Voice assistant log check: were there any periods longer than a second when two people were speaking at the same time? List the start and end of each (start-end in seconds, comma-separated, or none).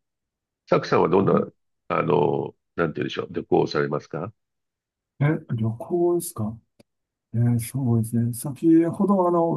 none